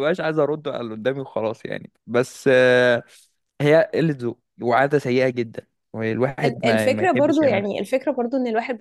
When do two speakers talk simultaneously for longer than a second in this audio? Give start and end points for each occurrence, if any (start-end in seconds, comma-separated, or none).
6.4-7.8